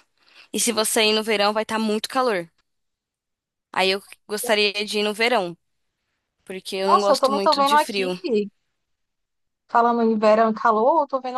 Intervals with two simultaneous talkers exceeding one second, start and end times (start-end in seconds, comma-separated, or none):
6.9-8.1